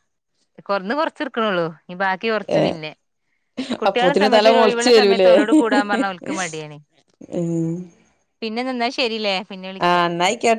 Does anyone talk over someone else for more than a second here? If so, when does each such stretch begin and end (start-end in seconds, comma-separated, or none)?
3.9-5.3